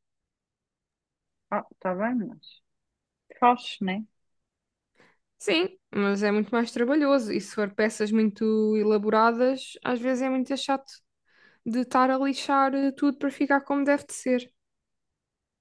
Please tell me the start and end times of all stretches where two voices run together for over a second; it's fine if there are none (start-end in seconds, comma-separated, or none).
none